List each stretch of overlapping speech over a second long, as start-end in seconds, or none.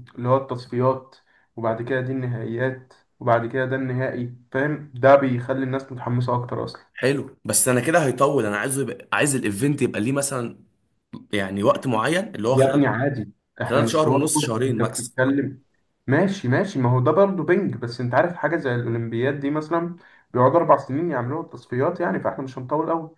13.6-15.2